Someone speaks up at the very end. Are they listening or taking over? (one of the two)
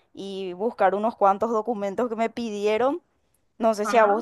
listening